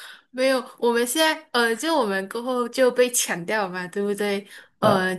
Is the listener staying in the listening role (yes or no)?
yes